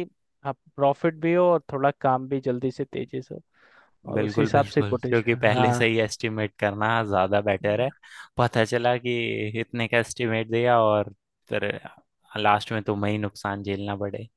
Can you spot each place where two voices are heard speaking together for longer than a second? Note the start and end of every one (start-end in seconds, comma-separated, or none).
4.1-5.8